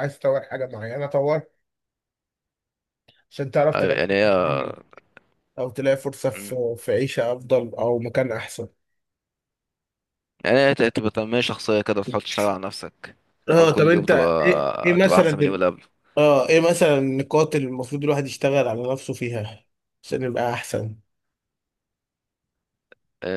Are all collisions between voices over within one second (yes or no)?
no